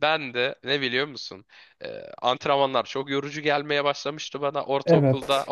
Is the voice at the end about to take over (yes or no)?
no